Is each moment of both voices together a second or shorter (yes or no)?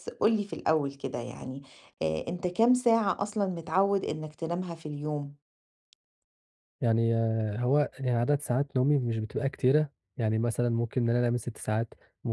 yes